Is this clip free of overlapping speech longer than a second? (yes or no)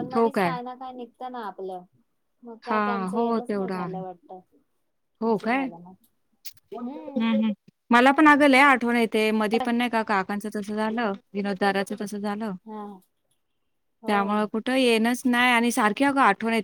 no